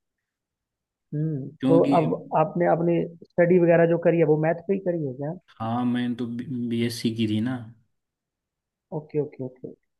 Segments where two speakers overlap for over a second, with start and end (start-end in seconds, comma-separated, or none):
none